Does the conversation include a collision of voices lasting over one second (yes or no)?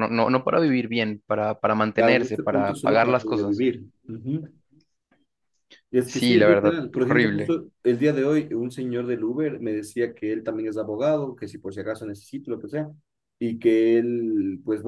yes